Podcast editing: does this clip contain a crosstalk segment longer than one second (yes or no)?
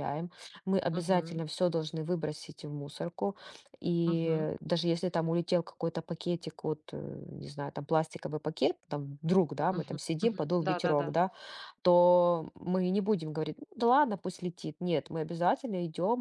yes